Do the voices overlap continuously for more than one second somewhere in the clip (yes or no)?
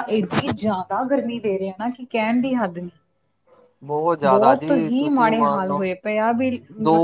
yes